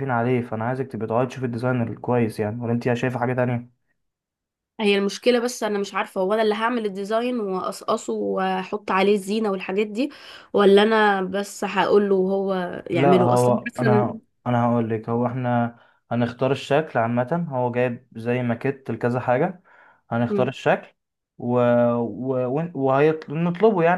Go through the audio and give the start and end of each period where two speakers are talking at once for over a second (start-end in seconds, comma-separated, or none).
12.9-14.2